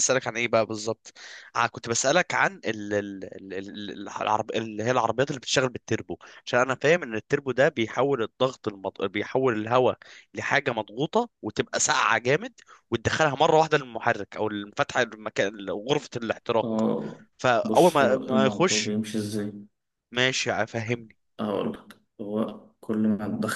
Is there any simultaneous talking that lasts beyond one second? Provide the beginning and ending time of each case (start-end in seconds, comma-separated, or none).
17.6-18.9